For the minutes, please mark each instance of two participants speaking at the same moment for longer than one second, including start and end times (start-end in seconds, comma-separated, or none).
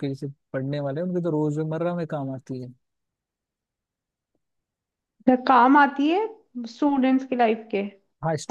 none